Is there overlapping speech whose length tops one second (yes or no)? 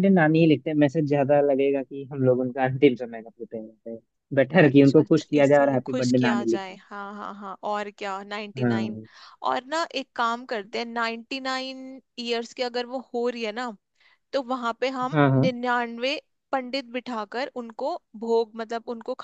yes